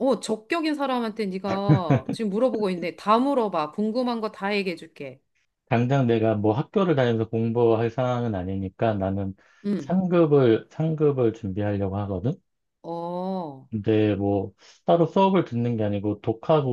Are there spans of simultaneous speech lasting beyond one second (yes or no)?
no